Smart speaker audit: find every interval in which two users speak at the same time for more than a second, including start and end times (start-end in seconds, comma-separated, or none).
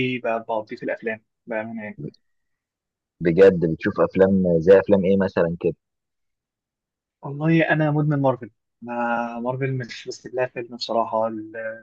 none